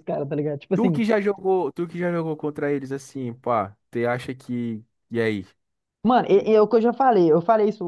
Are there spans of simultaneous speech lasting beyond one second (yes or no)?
no